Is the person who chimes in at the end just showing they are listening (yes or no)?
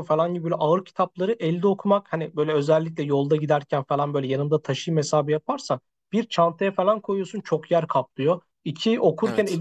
yes